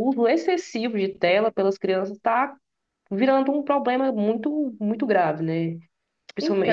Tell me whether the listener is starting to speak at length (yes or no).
no